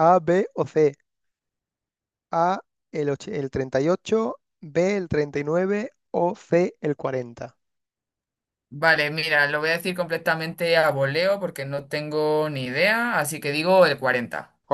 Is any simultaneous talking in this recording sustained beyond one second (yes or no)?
no